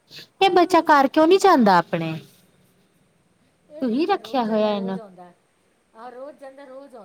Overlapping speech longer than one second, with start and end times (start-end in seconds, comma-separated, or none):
3.8-5.0